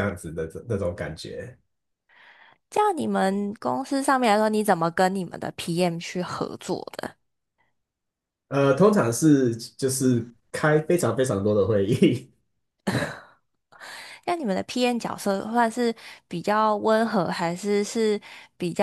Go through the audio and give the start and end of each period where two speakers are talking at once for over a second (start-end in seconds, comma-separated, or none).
none